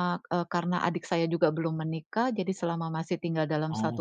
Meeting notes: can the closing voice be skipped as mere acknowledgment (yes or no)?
yes